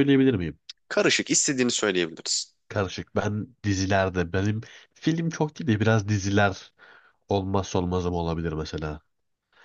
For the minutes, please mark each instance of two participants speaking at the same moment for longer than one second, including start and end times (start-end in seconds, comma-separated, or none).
none